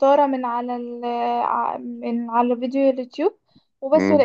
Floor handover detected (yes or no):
no